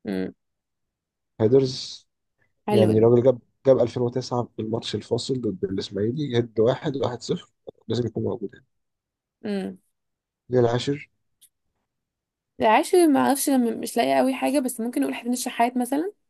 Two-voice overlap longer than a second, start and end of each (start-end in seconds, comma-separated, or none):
none